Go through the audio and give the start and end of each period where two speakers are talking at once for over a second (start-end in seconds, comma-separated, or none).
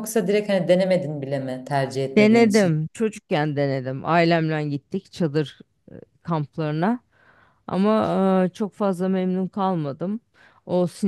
none